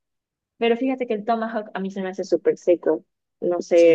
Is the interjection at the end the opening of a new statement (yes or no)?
yes